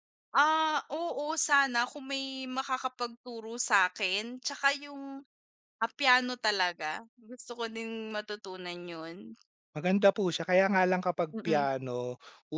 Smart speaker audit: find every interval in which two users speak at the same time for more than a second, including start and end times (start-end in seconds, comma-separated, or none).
none